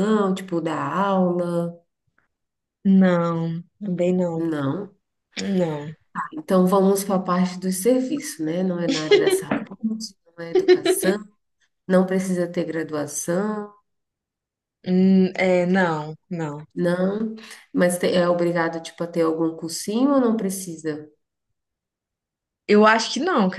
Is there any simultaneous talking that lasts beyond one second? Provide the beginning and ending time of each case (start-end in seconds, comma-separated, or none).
none